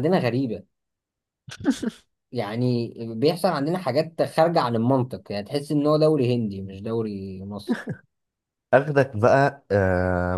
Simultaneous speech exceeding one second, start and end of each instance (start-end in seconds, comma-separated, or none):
none